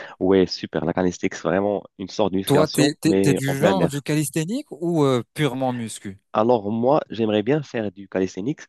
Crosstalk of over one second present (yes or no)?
yes